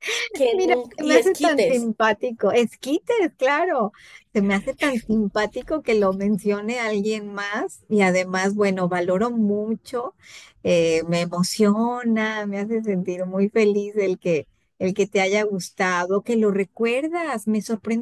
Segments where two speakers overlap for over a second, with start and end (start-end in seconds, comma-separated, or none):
0.5-1.9